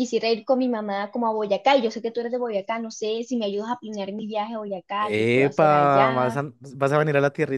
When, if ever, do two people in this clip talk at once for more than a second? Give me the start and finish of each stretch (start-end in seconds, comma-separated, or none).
5.0-6.4